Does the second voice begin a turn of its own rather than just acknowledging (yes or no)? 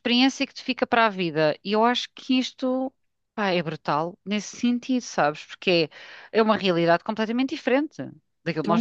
yes